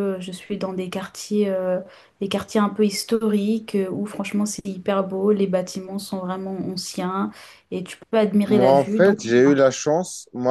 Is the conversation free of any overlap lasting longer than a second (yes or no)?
no